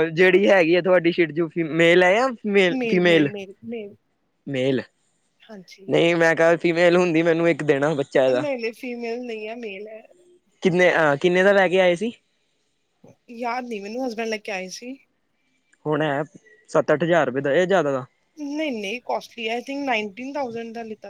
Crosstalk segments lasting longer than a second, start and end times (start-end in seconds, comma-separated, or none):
none